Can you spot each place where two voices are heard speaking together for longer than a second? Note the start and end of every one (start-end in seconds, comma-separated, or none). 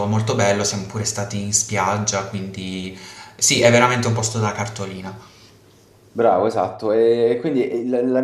none